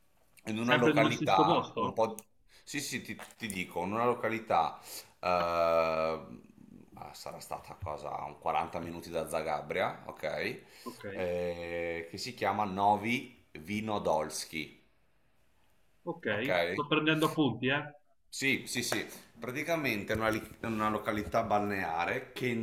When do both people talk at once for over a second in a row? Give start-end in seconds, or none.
0.6-2.0